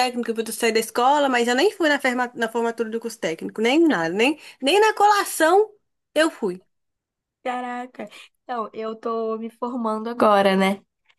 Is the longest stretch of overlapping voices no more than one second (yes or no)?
yes